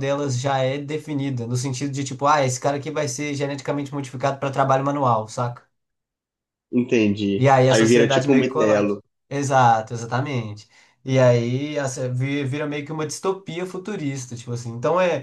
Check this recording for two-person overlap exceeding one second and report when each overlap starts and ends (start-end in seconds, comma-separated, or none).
7.3-9.0